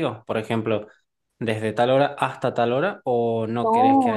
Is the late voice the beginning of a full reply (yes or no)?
yes